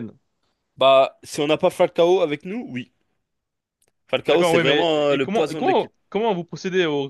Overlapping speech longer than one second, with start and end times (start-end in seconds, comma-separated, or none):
4.2-5.9